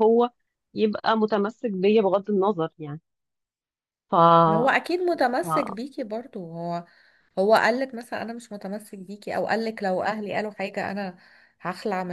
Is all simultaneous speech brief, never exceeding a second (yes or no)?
yes